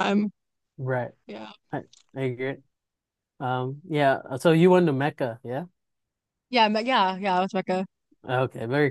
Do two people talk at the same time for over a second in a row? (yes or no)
no